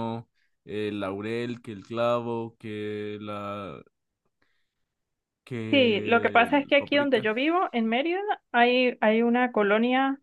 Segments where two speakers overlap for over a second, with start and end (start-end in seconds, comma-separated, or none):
5.7-7.3